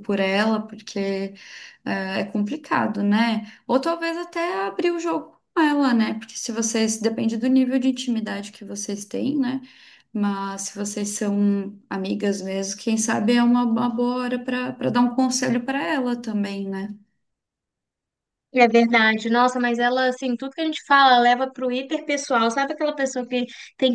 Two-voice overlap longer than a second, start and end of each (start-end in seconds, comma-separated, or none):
none